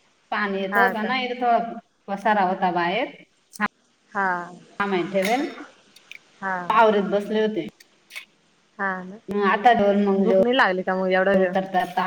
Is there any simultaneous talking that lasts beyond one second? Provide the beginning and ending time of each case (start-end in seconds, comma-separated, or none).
10.2-11.5